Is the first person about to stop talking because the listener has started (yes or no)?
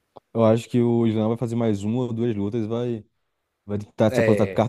no